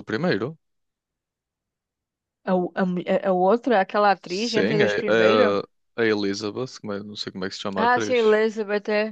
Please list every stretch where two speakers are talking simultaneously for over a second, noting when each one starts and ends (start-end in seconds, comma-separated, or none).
4.2-5.6